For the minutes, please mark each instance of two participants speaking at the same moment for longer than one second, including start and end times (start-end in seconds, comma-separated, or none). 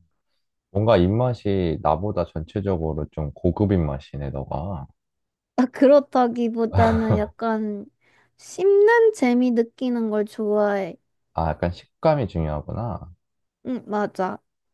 none